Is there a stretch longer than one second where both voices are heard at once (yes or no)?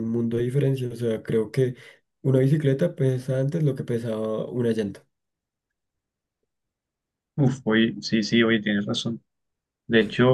no